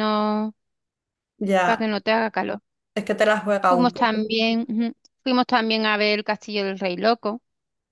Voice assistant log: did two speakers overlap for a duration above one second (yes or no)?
no